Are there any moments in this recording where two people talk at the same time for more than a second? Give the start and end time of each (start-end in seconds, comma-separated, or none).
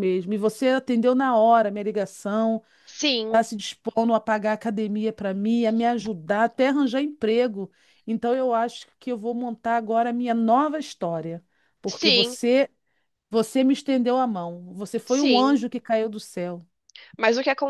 none